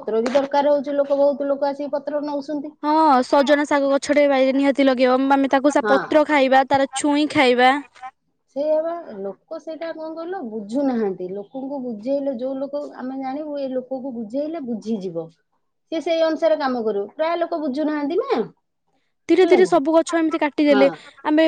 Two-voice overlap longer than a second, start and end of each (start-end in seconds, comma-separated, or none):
19.4-20.9